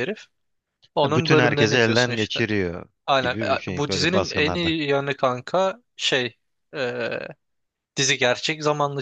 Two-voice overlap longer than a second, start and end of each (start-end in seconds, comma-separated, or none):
1.0-2.4, 3.1-4.8